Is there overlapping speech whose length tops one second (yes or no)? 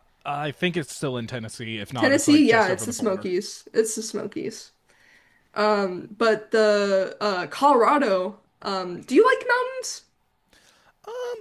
yes